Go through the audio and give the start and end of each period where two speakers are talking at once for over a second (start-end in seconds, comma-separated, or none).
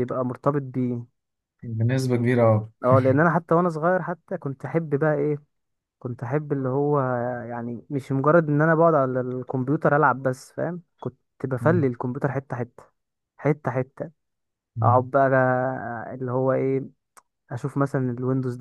none